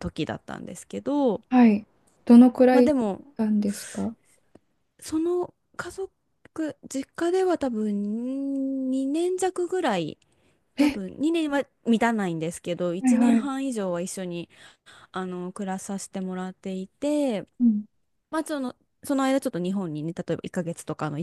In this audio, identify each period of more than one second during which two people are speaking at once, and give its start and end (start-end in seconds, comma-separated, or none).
none